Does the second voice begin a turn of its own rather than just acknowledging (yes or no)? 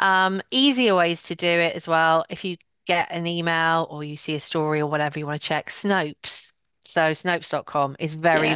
no